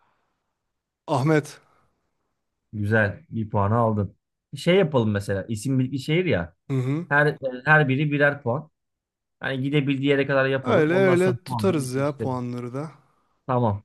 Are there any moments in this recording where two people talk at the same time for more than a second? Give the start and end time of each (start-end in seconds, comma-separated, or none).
10.6-12.4